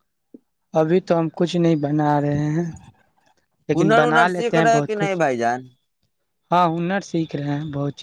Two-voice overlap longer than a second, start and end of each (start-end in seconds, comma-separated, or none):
3.7-5.2